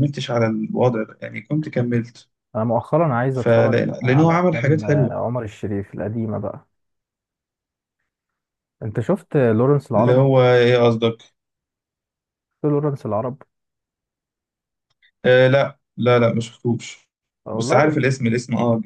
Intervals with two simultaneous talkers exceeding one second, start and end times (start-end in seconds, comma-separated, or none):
3.4-5.2